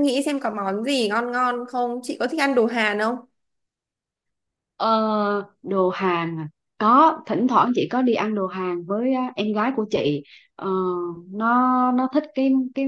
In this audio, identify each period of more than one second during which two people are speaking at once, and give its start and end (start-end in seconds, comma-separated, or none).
none